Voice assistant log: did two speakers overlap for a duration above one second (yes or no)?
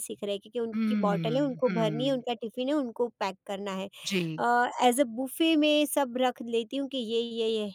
yes